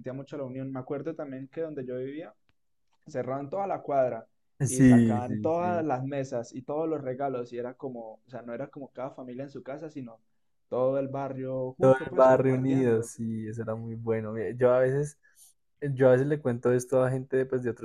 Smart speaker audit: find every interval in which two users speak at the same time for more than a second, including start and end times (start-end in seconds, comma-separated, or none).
4.7-5.8, 11.8-13.1